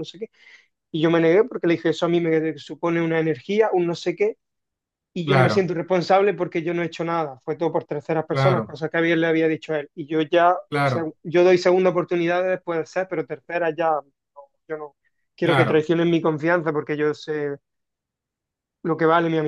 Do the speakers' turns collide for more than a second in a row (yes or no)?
no